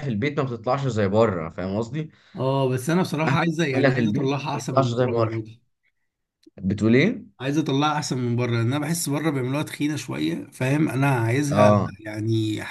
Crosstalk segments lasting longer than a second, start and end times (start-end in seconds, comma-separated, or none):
3.7-5.3